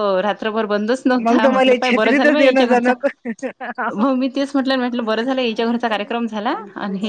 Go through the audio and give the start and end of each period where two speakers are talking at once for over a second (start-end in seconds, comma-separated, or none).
1.2-2.9